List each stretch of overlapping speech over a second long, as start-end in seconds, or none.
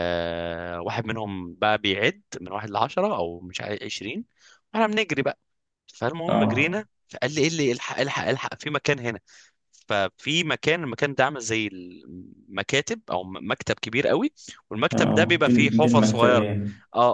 14.9-16.5